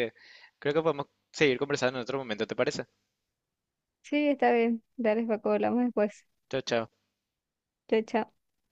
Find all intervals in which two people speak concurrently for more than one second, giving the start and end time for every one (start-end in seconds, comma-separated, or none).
none